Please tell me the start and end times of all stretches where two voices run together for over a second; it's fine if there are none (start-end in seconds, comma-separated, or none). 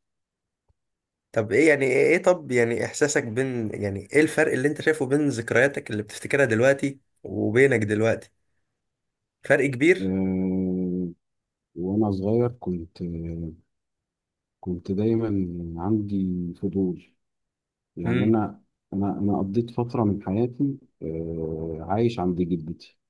none